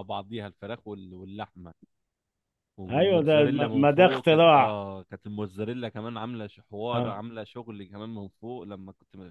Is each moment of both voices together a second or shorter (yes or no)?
no